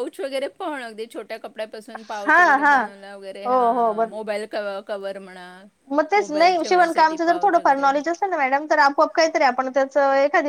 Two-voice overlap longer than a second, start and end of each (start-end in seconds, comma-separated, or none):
6.2-7.9